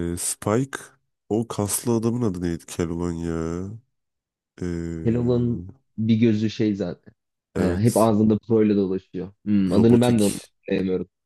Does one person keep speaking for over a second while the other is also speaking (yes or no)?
no